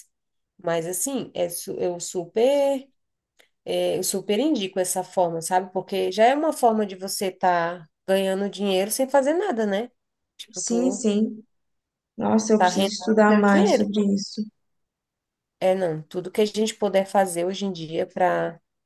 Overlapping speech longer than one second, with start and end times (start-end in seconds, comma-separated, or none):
12.6-13.9